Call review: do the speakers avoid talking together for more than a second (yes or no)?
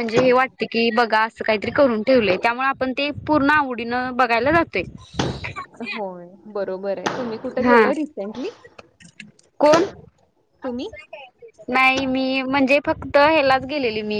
yes